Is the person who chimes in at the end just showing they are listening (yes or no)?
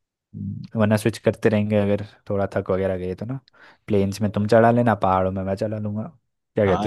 no